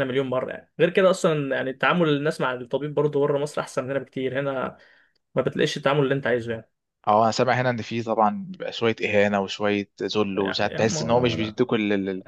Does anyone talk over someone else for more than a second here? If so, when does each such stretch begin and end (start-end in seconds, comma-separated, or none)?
10.3-11.6